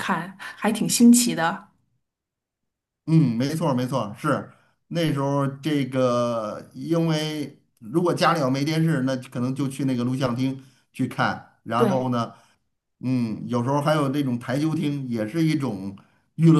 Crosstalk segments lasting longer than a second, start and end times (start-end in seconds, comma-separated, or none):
none